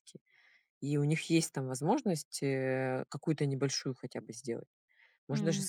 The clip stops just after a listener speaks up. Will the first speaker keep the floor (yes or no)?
yes